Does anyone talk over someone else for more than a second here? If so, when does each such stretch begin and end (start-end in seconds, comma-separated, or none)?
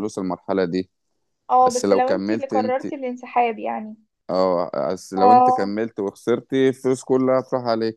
1.6-2.8